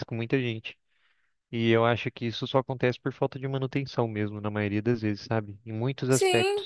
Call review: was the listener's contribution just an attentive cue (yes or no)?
no